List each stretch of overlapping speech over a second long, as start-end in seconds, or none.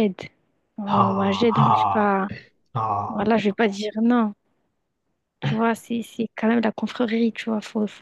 0.9-2.2